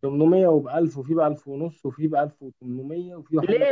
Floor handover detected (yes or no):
yes